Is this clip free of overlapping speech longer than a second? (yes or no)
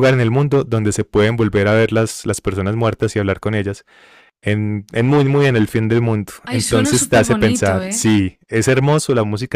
no